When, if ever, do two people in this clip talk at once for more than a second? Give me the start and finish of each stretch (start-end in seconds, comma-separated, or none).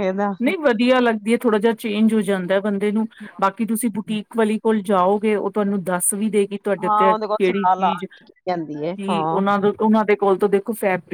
6.8-9.4